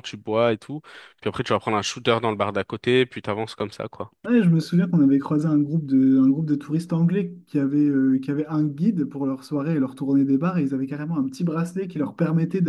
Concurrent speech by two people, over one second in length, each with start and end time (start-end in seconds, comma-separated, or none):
none